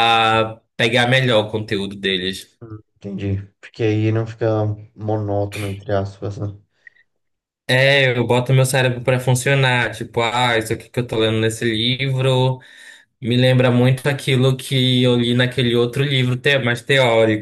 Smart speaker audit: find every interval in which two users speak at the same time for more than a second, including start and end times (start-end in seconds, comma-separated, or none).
none